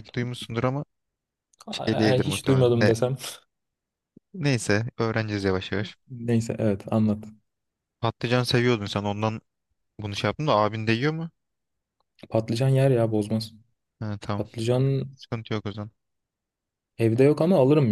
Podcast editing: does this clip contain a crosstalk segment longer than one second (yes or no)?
yes